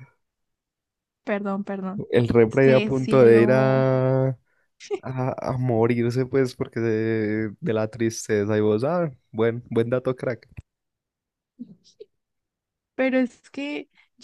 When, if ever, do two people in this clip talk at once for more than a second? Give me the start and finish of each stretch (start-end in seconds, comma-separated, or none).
2.5-3.8